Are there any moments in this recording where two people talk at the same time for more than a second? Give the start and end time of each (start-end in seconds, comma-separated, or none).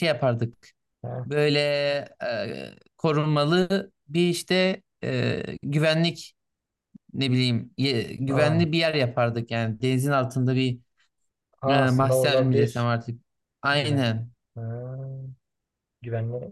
11.7-12.9